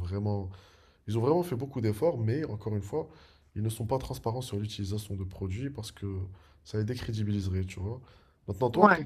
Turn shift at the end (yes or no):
no